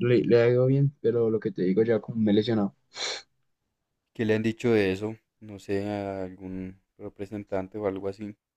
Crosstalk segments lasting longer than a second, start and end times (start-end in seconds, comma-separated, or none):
none